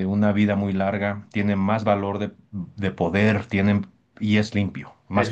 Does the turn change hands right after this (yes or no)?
yes